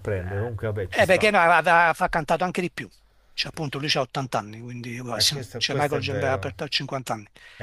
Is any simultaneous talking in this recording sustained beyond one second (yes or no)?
yes